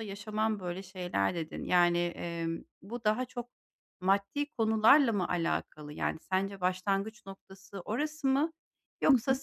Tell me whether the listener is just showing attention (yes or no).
yes